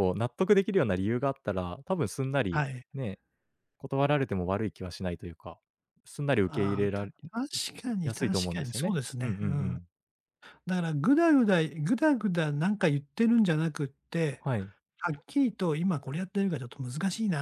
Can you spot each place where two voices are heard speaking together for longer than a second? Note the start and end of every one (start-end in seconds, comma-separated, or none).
8.0-9.8